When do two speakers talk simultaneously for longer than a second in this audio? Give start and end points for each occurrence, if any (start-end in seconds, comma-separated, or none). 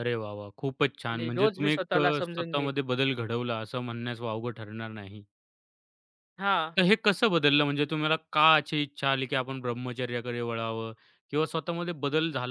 1.1-2.7